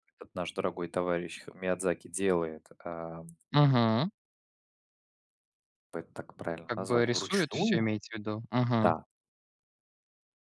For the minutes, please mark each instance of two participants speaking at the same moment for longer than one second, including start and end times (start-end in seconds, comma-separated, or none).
6.7-7.9